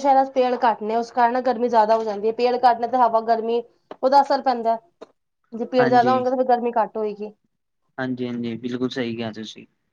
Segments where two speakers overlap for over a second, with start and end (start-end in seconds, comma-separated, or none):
none